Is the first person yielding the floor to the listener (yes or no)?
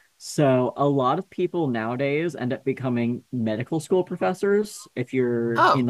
no